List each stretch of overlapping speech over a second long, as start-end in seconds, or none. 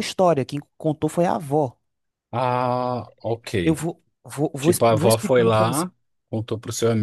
4.6-5.9